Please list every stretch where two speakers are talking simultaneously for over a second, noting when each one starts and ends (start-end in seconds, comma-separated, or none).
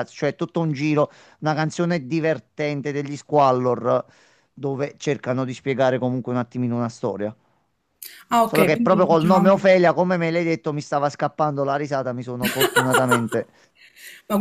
8.4-9.7